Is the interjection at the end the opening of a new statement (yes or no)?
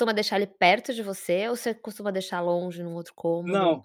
yes